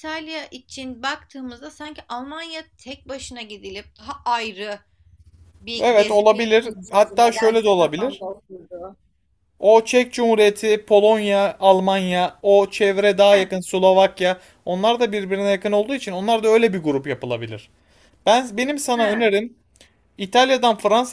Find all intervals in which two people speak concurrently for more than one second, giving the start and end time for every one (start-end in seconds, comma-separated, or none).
5.8-8.2